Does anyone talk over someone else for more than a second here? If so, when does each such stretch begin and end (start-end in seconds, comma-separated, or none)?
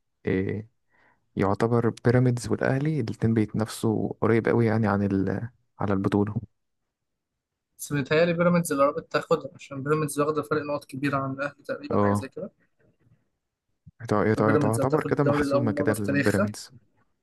14.4-16.5